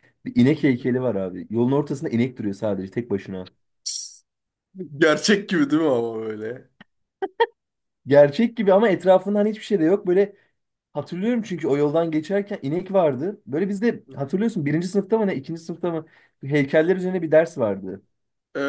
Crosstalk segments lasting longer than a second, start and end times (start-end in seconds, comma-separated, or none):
none